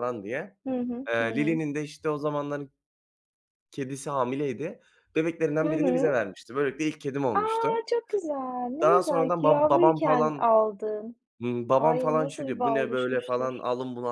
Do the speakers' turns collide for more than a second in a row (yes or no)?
yes